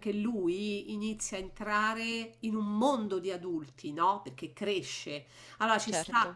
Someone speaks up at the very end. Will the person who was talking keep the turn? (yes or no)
yes